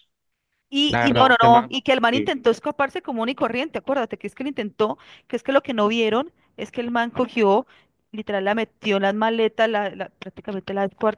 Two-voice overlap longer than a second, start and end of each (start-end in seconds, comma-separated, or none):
0.9-2.4